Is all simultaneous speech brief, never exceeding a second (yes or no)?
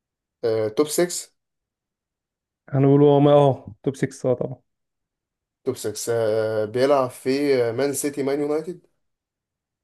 yes